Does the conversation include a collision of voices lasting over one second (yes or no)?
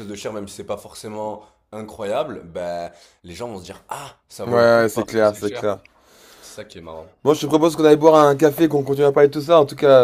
yes